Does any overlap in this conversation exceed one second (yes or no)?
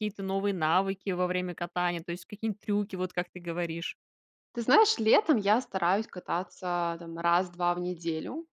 no